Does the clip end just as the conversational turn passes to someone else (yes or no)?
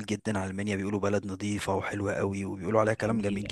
yes